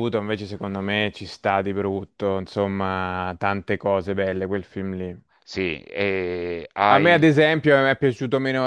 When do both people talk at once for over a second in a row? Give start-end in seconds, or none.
none